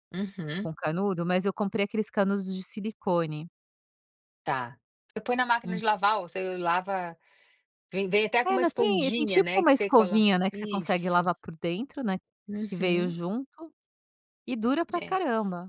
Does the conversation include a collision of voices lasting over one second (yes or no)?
yes